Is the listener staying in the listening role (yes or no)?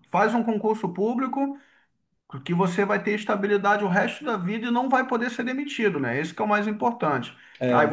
yes